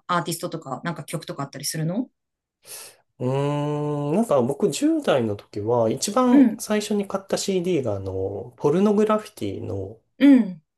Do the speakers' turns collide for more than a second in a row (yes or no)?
no